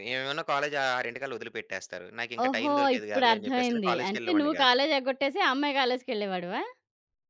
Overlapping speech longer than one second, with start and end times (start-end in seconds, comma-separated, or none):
2.5-4.8